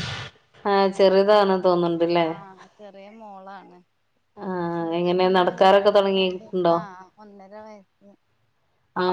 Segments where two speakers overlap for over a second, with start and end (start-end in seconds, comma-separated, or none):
5.0-6.8